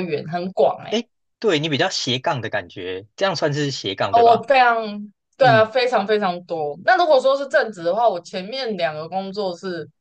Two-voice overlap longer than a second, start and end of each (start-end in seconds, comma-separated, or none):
none